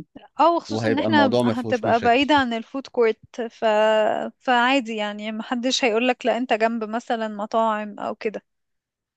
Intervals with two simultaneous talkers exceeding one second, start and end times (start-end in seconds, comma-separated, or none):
0.7-2.3